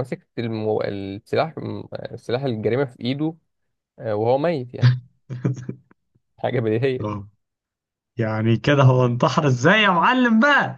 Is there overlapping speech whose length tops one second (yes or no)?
no